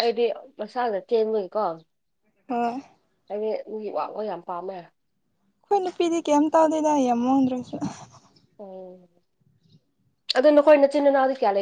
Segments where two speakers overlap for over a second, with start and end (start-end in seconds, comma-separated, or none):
none